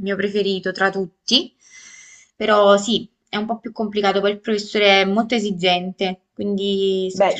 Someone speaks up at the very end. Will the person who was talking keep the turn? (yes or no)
no